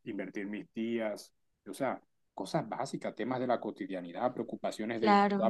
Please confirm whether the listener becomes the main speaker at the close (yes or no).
no